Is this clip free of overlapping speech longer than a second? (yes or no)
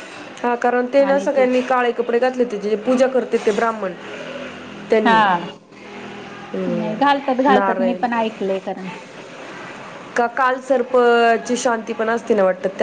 no